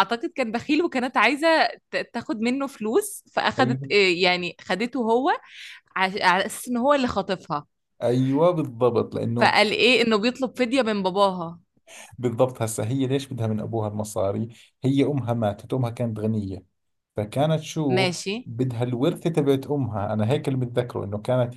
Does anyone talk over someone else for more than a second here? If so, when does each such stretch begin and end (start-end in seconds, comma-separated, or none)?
none